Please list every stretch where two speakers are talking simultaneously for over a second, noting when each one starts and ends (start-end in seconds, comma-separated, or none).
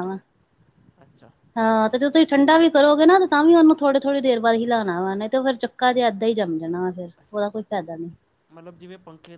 none